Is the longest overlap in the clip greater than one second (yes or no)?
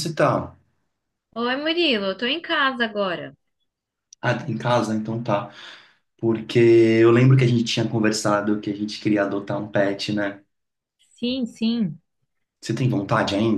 no